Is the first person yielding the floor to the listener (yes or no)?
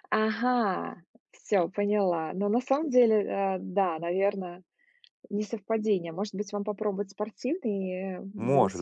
yes